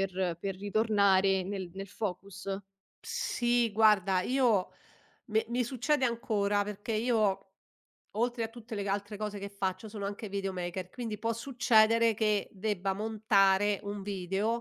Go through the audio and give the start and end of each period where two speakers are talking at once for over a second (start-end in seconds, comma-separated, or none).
none